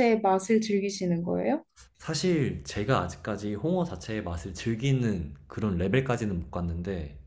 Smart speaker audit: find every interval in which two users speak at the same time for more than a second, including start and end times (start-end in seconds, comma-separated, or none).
none